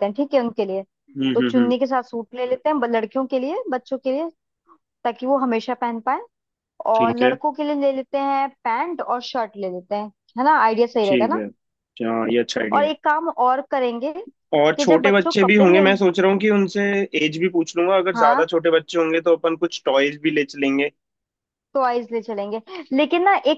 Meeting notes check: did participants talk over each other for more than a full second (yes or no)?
yes